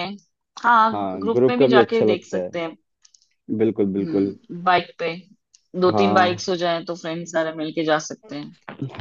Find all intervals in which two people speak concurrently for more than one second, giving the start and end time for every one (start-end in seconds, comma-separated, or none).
0.9-2.5